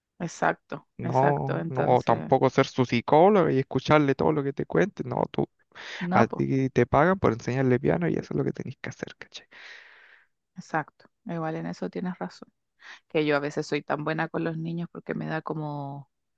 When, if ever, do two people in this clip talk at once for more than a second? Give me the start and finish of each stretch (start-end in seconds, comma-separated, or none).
1.0-2.3